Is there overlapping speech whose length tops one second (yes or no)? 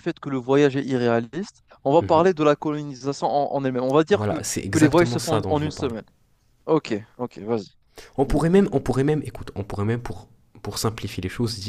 yes